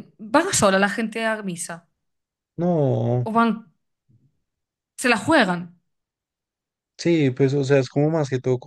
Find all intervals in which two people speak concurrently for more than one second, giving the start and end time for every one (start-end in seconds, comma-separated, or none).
none